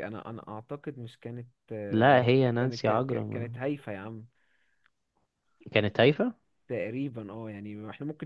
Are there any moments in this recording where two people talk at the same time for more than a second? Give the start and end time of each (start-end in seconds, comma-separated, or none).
1.9-3.5